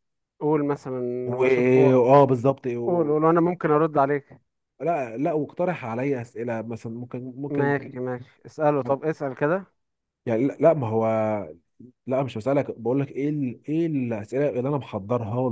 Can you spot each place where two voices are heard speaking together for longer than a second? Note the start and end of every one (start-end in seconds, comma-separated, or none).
none